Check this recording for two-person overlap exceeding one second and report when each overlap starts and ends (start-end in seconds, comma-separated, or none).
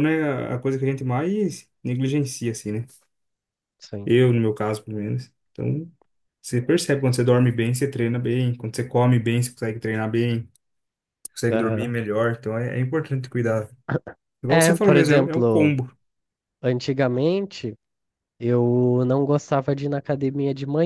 14.5-15.7